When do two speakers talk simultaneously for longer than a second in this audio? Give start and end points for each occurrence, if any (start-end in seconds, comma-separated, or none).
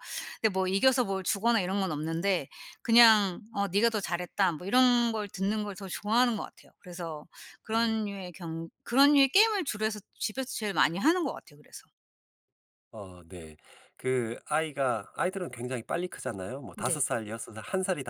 none